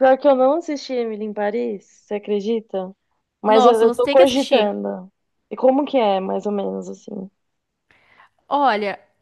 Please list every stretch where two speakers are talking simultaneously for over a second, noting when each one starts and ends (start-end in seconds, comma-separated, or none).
3.5-4.8